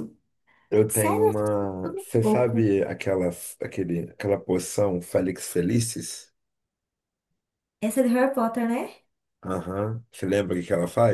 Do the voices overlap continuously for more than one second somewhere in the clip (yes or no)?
yes